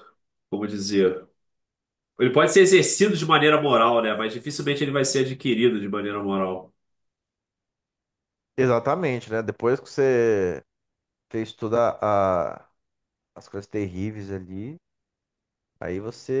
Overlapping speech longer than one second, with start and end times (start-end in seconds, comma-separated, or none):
none